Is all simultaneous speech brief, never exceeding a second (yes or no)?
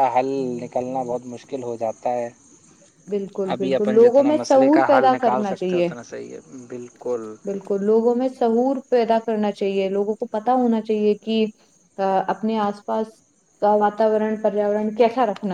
no